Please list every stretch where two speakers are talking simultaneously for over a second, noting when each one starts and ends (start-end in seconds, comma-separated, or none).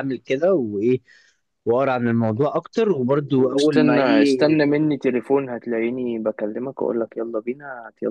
3.4-4.6